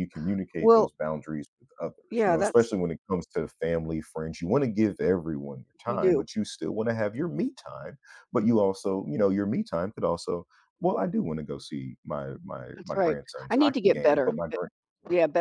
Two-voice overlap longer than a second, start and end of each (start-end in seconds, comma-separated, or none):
12.8-14.6